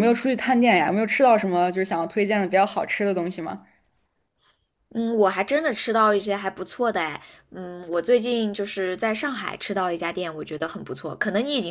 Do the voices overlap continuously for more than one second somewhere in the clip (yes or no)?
no